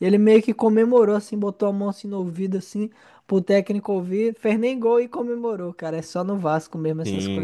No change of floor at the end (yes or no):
no